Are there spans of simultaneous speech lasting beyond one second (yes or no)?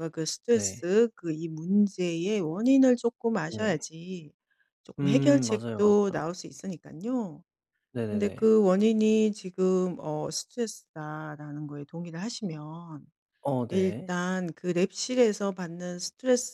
yes